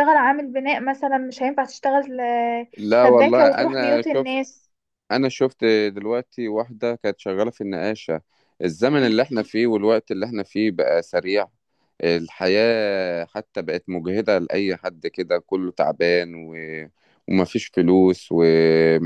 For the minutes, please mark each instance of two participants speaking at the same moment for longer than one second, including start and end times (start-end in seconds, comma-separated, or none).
3.0-4.3